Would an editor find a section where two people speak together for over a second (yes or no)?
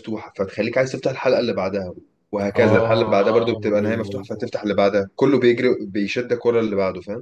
yes